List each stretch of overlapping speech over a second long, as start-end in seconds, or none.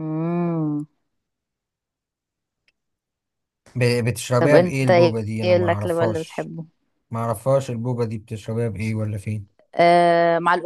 4.4-6.5